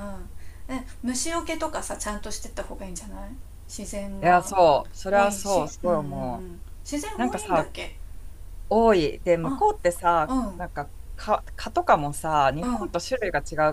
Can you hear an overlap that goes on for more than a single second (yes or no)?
yes